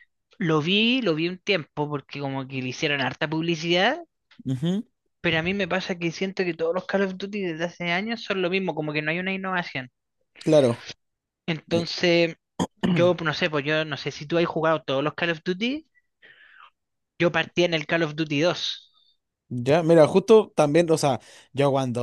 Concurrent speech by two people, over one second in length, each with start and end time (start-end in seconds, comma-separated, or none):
none